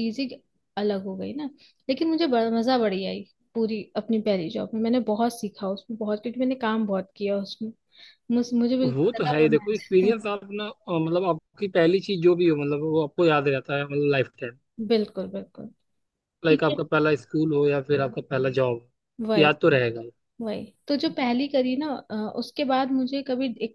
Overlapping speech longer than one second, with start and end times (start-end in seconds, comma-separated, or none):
8.9-10.2